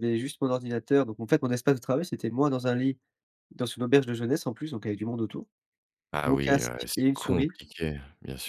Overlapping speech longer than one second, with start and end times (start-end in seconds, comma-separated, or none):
6.2-7.6